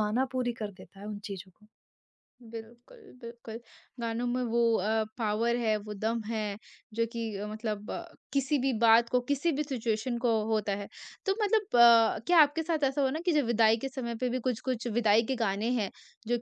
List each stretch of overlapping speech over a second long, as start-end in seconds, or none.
none